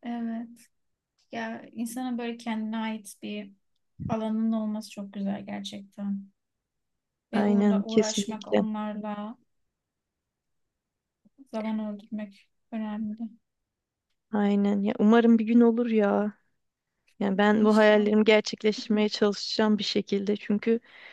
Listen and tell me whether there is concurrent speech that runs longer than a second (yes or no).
yes